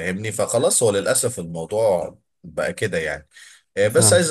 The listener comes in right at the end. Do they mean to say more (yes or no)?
no